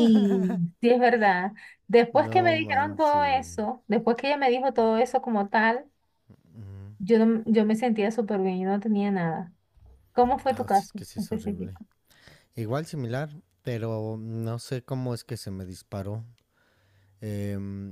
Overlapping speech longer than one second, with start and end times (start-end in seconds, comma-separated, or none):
2.1-3.5, 10.5-11.8